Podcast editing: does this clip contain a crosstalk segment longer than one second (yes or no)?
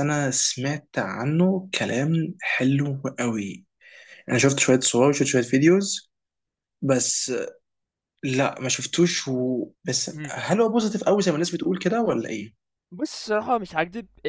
no